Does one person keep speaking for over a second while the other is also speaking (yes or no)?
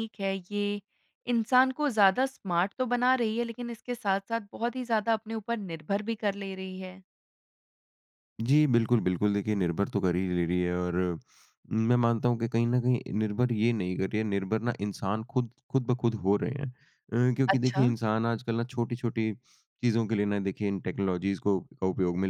no